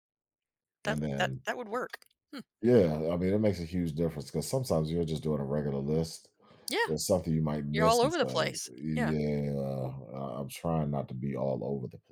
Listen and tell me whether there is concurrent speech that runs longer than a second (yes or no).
yes